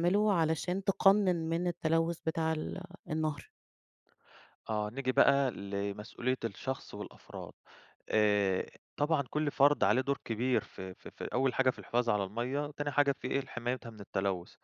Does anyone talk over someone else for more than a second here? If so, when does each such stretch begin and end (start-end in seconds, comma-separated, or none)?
none